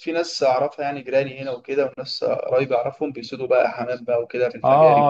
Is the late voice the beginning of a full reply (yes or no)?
yes